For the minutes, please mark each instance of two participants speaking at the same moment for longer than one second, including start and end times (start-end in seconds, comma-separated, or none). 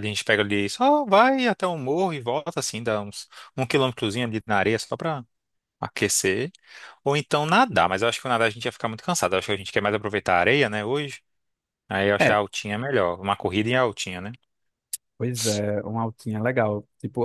none